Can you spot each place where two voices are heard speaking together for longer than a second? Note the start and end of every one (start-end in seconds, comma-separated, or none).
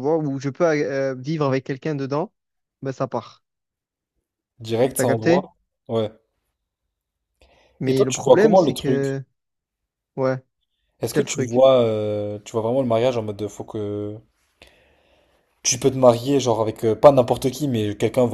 7.8-9.2